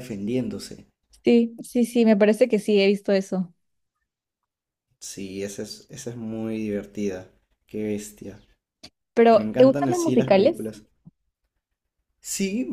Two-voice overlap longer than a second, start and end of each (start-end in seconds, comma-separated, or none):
9.3-10.7